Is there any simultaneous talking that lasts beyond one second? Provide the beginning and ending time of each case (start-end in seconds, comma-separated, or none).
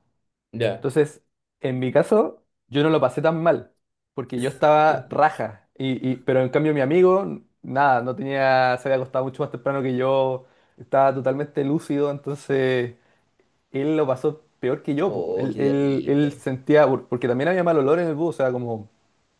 15.0-16.4